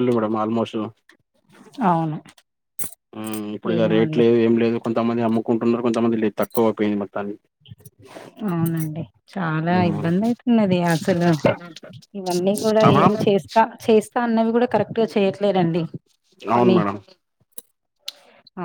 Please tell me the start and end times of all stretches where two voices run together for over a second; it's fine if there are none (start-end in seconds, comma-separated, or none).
none